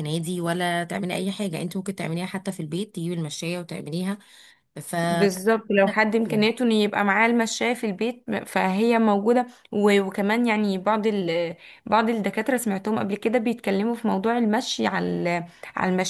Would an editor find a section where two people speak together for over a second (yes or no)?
no